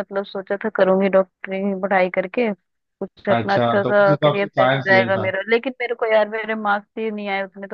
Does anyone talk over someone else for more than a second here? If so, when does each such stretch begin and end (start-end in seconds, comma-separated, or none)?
3.4-5.3